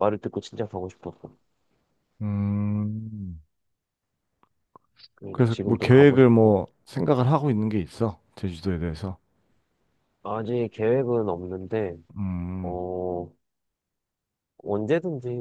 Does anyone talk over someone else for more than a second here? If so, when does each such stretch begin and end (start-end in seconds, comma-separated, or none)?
5.3-6.5